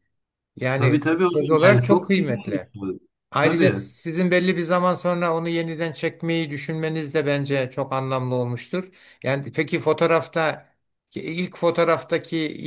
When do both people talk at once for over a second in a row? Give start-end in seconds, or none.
0.7-2.7